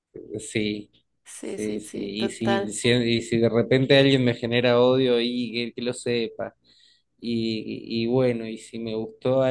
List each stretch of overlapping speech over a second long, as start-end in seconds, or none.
1.4-2.8